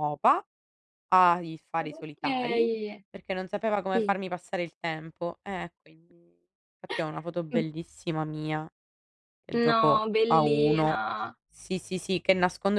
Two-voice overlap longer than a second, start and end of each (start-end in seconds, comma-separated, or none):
9.7-11.1